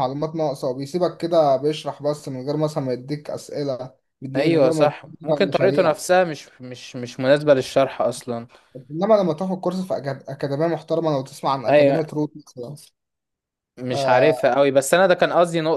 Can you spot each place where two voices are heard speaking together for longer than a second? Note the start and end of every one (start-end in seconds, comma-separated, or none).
4.4-5.9